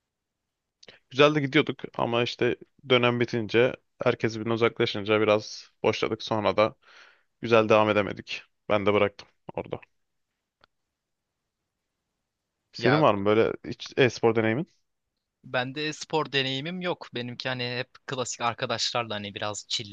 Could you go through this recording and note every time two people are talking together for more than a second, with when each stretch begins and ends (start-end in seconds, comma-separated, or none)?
none